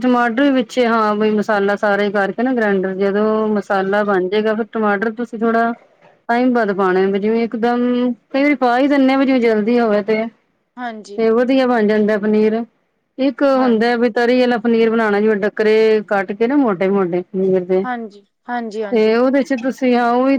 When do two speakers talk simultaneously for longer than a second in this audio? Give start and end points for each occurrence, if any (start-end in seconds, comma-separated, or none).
none